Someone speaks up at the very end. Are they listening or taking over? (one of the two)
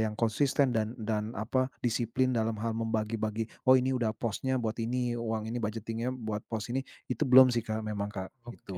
taking over